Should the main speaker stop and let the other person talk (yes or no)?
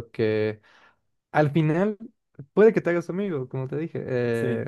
no